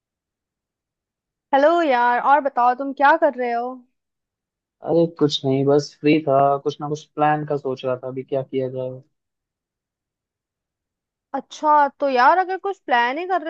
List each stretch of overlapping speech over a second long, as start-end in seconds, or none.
none